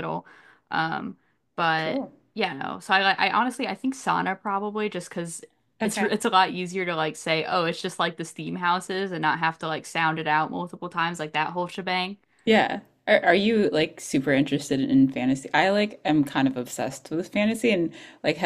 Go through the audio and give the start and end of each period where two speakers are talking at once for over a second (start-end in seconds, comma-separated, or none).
none